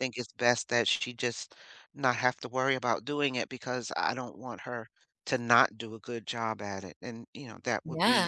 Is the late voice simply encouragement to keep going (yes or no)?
yes